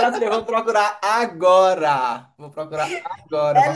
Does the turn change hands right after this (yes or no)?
yes